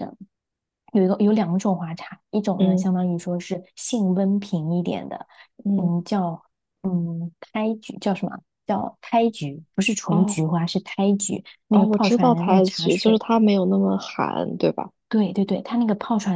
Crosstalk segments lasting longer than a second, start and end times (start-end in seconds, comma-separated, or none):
11.7-13.2